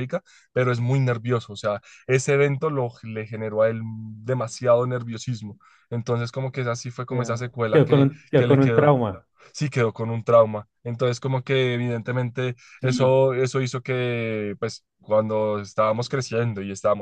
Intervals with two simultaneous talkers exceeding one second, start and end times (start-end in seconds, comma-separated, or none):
7.1-9.0